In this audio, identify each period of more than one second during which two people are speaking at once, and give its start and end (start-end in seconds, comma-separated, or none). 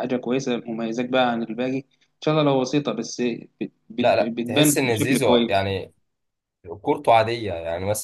4.0-5.7